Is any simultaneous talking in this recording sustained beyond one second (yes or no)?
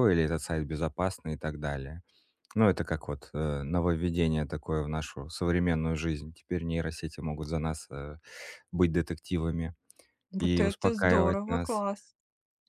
yes